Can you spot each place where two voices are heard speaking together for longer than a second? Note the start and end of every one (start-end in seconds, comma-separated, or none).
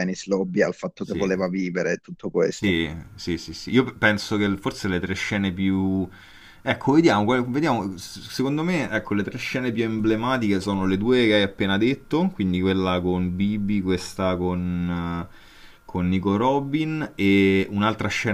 none